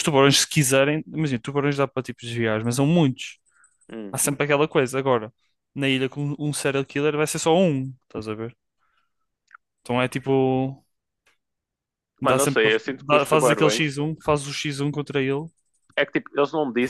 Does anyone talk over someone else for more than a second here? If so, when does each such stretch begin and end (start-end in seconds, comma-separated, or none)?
12.2-14.0